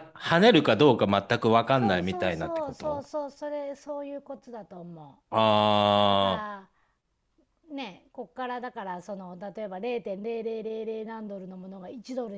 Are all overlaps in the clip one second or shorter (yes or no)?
no